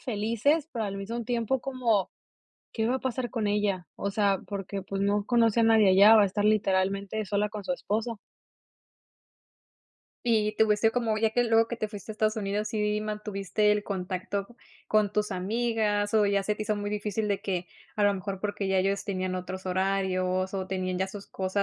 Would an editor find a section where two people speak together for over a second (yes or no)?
no